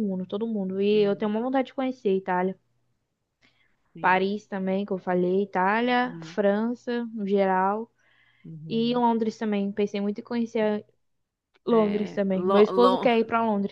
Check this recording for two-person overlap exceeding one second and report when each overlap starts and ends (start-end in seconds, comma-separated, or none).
11.7-13.1